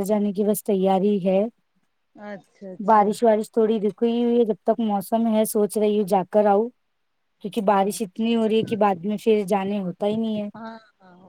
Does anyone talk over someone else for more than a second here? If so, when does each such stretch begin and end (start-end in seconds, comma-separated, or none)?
none